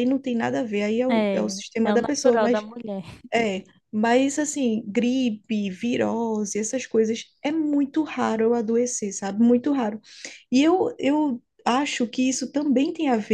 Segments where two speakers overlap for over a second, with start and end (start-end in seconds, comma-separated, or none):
1.1-2.6